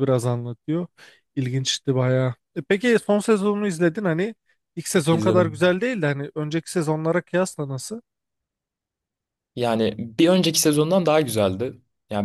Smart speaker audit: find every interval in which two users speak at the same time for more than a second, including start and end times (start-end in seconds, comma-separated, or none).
none